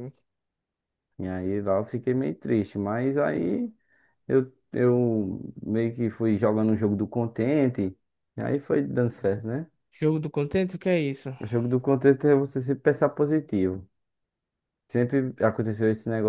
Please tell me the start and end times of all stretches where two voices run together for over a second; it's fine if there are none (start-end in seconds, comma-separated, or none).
none